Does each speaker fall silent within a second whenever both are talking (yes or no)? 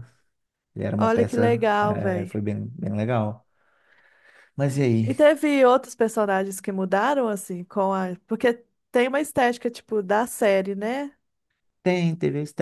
no